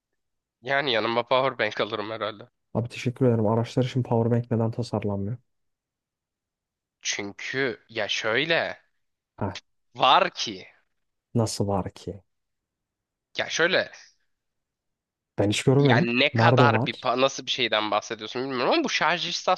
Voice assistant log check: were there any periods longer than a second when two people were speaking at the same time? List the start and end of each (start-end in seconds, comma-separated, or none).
15.8-17.1